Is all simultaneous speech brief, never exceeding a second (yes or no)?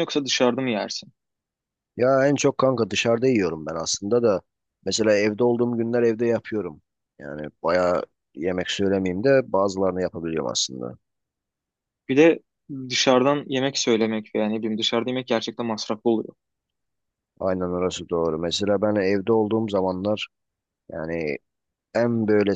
yes